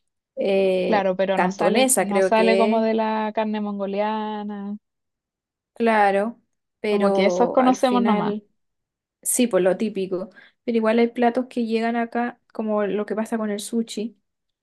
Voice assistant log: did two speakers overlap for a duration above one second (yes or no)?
yes